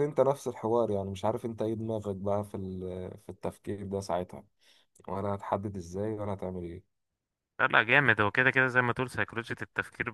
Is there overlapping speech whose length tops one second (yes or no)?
no